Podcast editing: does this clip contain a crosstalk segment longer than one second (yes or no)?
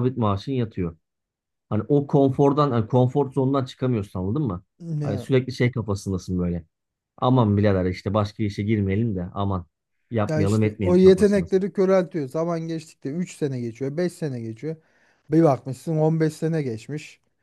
yes